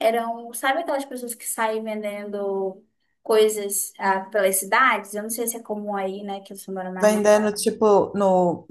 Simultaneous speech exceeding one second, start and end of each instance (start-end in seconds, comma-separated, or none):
none